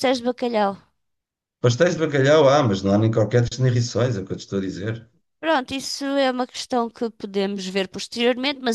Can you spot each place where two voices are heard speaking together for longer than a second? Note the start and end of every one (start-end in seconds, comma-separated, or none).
none